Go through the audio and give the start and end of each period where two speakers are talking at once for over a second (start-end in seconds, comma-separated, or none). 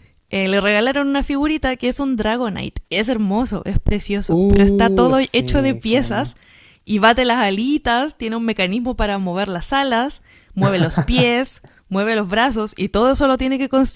4.3-6.3